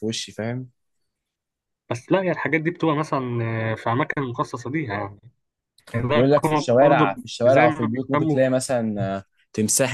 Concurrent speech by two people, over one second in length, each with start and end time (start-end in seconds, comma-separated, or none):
6.1-8.5